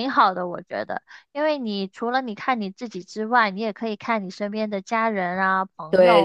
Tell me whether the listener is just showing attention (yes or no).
yes